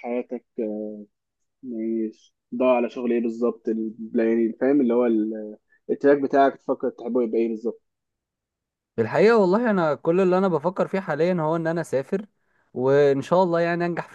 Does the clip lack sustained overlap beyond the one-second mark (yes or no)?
yes